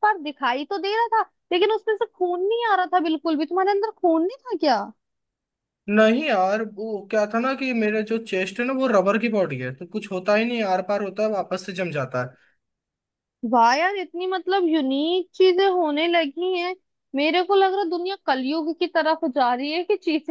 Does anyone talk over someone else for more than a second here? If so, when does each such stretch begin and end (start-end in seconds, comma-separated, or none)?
none